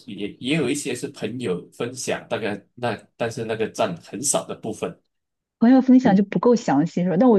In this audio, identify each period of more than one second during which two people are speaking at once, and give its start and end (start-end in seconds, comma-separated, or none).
none